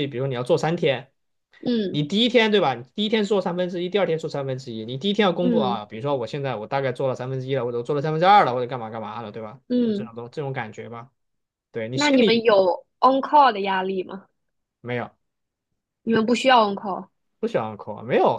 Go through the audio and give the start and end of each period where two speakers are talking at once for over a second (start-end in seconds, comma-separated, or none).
none